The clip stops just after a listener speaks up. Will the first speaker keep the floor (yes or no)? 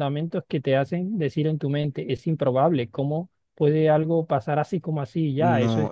no